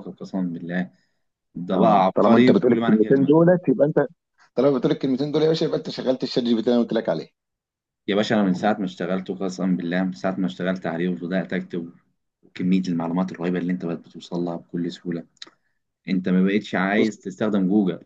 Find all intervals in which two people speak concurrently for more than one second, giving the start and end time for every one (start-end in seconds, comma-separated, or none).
1.7-3.4